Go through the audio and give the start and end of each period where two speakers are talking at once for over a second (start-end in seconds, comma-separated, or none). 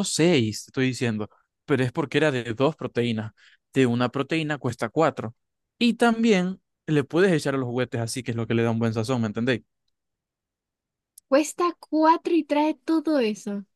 none